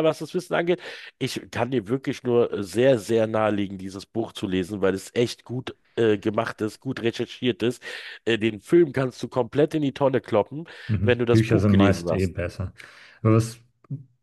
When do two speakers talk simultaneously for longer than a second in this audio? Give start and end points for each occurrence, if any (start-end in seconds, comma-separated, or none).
11.0-12.3